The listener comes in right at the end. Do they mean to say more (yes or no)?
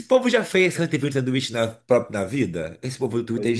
no